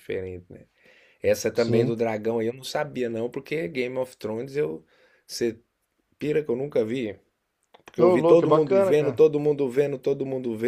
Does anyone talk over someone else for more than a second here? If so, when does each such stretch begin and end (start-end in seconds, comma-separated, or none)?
8.0-9.2